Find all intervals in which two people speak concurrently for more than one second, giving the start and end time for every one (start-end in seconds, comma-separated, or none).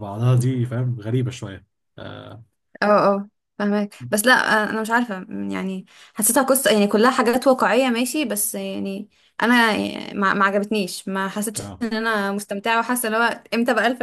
none